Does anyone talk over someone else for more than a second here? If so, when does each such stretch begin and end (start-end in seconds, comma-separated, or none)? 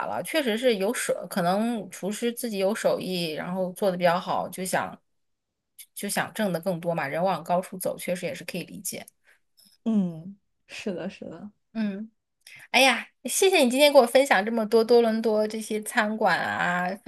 none